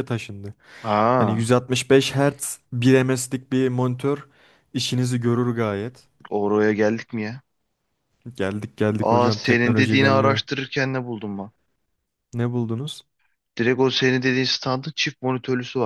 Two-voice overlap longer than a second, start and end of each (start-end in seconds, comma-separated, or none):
9.0-10.4